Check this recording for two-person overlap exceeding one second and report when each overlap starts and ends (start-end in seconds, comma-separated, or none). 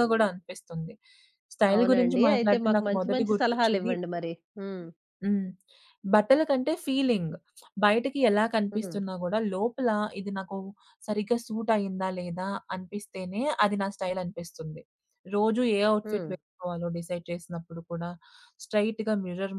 1.8-3.9